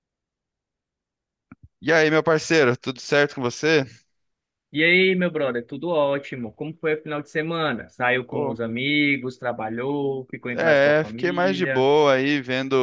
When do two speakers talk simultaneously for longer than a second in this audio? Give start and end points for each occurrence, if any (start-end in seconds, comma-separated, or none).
10.5-11.9